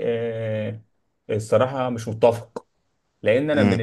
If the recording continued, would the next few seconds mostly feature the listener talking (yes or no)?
no